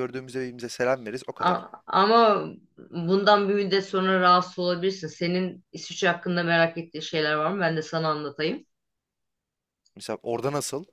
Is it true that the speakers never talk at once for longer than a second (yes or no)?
yes